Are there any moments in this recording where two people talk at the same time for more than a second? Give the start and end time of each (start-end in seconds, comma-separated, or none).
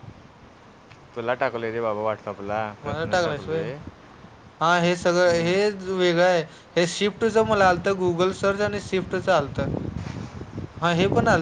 none